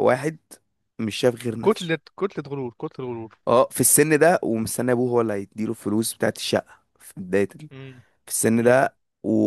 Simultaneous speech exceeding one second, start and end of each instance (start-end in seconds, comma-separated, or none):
none